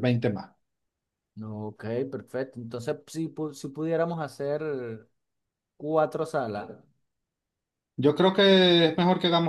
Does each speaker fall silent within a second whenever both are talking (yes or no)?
yes